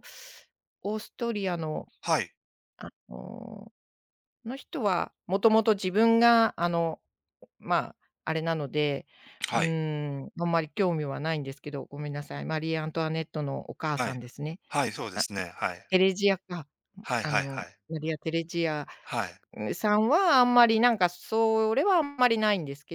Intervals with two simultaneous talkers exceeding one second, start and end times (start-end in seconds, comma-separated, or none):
none